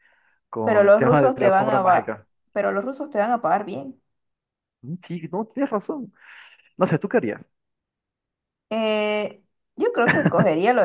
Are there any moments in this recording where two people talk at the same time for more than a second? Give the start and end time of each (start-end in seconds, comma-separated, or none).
0.6-2.3